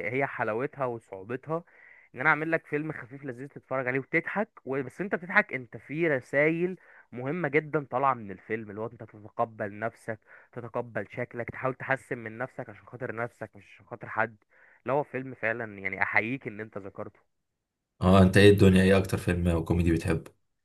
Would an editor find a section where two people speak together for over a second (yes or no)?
no